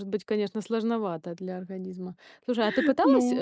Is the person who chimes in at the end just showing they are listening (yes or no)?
yes